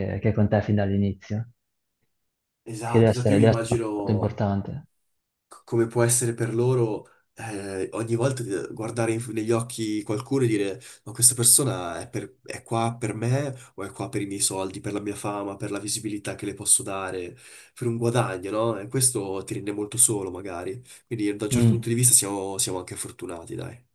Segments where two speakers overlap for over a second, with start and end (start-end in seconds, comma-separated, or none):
2.8-4.4